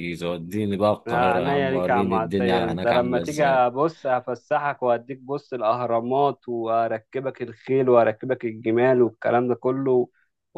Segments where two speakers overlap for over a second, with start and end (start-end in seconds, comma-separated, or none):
1.1-3.7